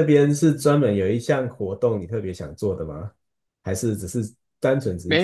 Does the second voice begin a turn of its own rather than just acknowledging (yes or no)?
yes